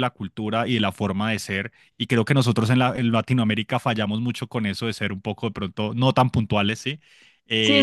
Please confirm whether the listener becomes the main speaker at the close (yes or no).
yes